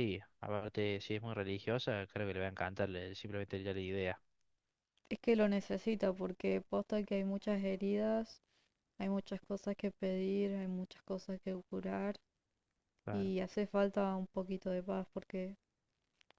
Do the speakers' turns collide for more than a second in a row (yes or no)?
no